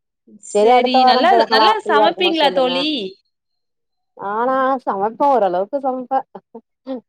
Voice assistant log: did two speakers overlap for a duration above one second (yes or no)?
yes